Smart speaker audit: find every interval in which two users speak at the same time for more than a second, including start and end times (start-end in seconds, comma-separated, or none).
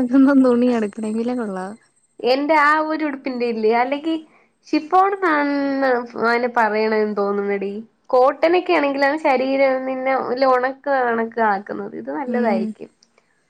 none